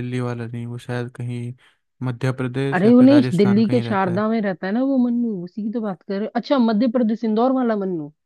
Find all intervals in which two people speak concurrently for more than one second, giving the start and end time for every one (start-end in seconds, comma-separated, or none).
2.8-4.2